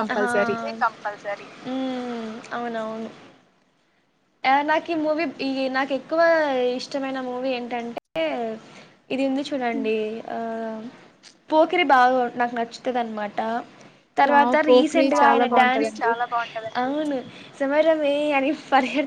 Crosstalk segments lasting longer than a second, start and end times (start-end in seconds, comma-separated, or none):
14.3-16.1